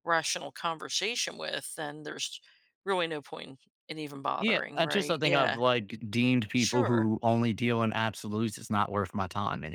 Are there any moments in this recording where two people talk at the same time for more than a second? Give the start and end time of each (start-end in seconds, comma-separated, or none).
4.4-5.6